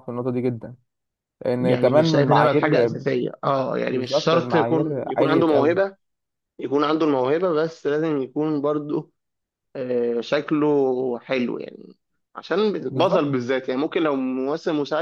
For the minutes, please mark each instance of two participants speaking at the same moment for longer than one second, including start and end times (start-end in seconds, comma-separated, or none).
1.6-3.0, 3.9-5.8